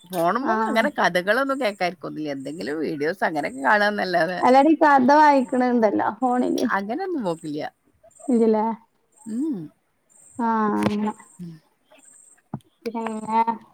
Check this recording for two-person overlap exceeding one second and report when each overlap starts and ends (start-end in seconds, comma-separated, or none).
none